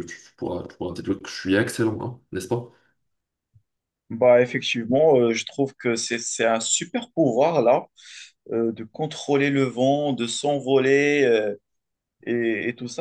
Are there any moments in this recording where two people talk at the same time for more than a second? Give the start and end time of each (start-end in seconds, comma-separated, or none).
none